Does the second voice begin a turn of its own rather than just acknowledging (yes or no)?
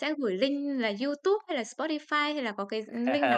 yes